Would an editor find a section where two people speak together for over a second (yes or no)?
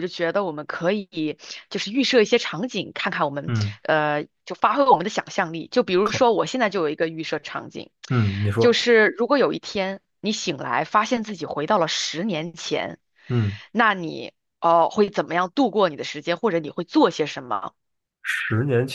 no